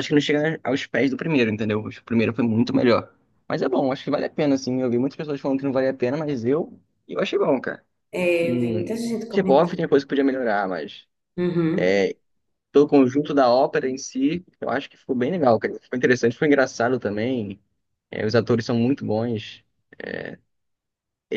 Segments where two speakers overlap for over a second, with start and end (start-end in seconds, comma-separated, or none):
8.4-9.9